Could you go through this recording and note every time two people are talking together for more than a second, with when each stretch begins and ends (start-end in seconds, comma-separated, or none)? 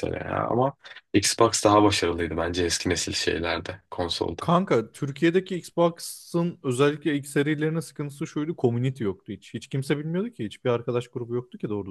none